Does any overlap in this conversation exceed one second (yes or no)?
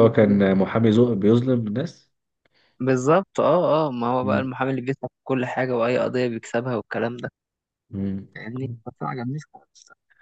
no